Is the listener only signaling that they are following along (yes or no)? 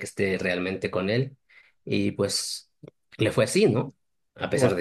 yes